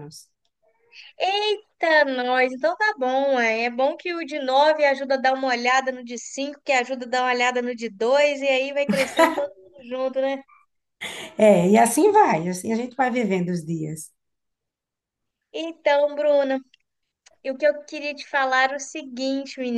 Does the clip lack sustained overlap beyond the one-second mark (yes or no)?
yes